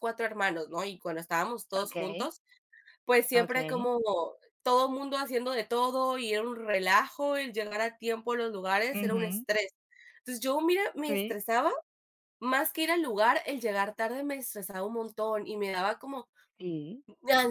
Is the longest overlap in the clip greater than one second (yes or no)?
no